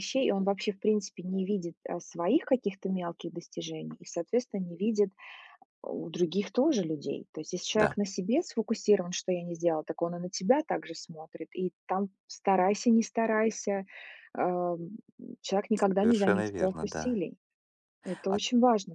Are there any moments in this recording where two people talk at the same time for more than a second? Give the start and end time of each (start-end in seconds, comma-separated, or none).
16.0-17.2